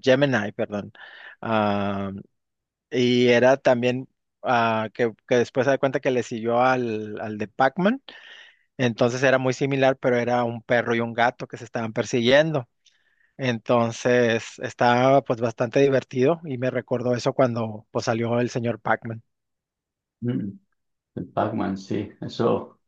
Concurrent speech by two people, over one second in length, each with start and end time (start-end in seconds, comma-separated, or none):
none